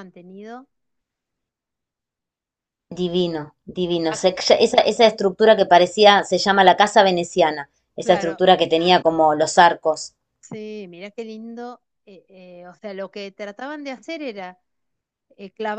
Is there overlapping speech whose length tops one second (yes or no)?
no